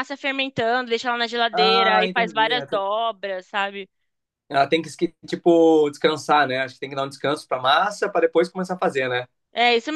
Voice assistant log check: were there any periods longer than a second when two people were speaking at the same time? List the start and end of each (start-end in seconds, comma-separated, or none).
1.5-2.8